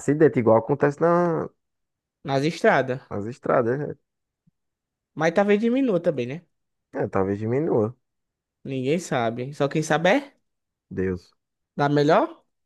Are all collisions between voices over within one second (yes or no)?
yes